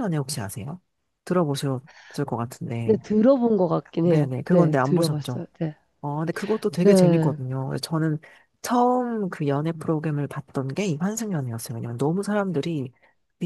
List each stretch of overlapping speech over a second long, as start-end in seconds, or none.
4.0-5.4